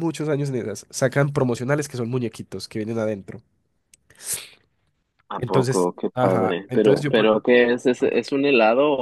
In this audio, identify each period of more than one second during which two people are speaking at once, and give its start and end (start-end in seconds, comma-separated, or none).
5.4-7.3